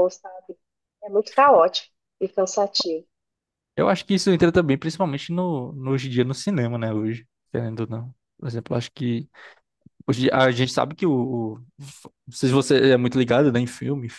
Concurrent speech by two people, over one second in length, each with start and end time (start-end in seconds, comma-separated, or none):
none